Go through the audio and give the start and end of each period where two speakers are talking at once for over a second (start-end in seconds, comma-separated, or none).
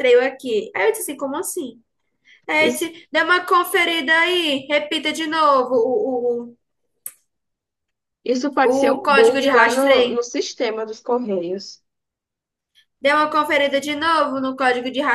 8.6-10.2